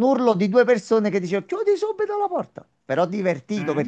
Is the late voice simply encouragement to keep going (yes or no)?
yes